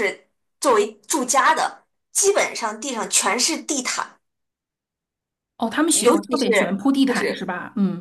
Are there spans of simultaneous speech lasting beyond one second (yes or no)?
yes